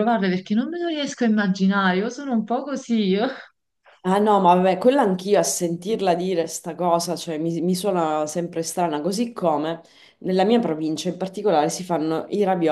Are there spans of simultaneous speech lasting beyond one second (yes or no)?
no